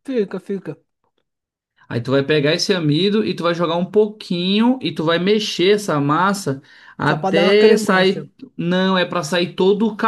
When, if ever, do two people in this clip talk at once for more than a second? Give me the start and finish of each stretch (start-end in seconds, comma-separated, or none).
7.1-8.3